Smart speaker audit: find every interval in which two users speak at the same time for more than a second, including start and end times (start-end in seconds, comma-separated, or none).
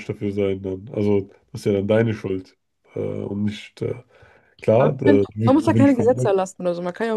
4.8-6.3